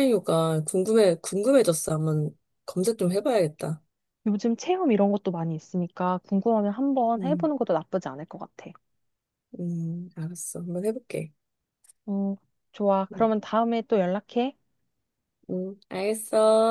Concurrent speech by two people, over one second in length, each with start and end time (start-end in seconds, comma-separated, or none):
none